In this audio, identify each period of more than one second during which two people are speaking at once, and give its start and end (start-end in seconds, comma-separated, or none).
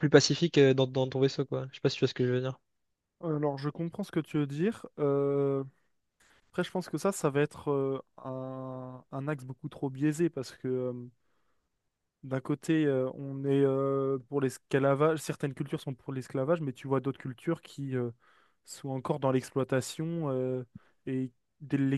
none